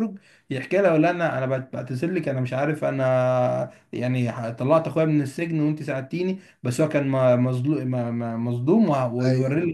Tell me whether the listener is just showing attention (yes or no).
yes